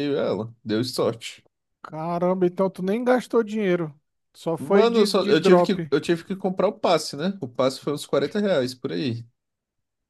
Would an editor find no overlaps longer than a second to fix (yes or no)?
no